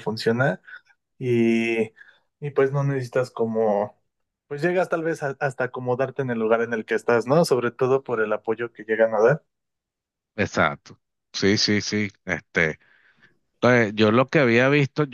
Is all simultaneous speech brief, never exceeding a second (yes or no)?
yes